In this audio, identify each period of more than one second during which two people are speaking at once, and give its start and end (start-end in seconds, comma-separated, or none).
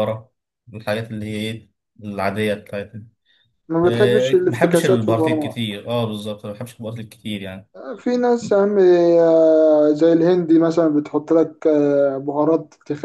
3.8-5.5